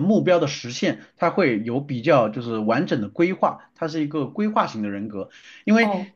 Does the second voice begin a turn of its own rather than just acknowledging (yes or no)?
yes